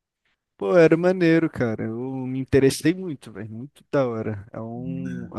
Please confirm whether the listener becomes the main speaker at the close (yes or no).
no